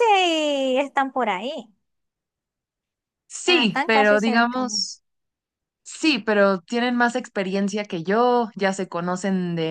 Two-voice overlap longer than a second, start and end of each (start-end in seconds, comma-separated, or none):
3.4-4.7